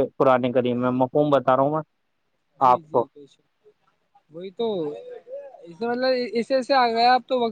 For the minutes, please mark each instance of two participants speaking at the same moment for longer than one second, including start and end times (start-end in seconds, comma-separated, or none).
none